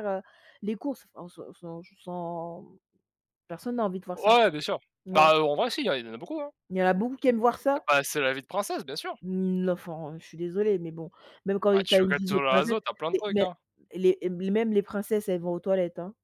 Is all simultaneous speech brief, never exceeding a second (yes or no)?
no